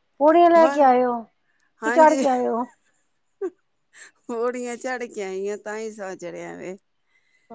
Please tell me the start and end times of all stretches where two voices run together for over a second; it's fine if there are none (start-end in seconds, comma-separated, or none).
none